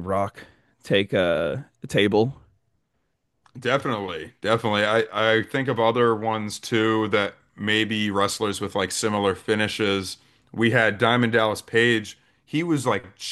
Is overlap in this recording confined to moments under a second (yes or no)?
yes